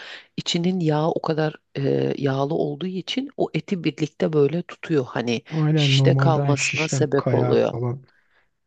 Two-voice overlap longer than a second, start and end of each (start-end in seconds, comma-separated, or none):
5.5-7.7